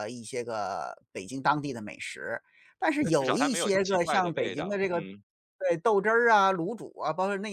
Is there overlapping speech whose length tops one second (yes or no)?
yes